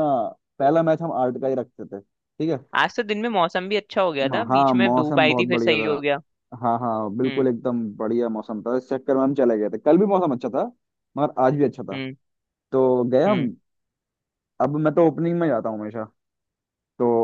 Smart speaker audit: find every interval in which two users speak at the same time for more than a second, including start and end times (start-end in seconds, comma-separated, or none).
4.2-5.9